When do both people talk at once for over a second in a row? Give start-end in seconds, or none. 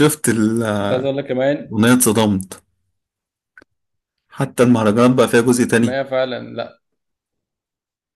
none